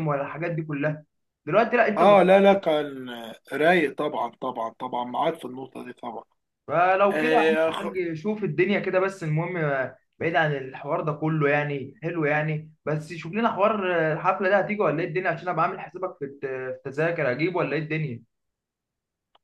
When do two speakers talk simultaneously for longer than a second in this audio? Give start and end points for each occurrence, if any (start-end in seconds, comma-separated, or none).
none